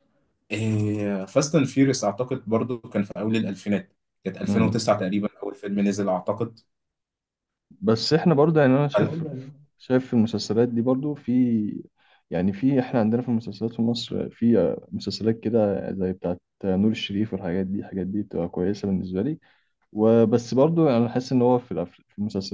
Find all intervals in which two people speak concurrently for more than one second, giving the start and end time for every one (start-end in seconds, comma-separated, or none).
none